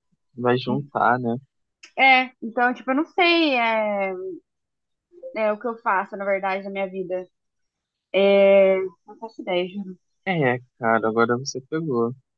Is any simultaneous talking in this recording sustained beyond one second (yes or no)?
no